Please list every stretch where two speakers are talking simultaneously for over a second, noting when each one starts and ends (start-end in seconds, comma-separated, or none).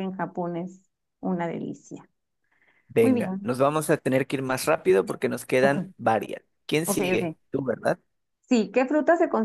none